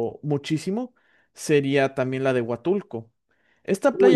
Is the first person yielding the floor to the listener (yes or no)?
yes